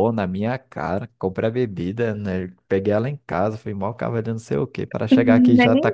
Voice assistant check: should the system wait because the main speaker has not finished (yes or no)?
no